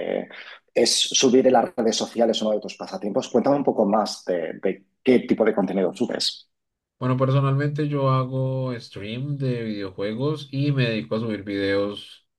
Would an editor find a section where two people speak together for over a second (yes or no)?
no